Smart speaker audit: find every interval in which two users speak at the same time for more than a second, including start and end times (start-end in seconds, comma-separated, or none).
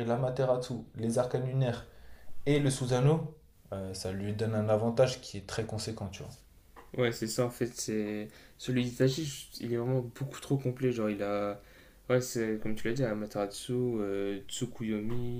none